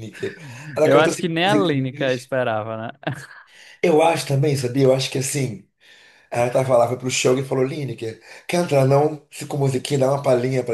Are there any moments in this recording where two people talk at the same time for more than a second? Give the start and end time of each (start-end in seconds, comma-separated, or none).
0.8-2.3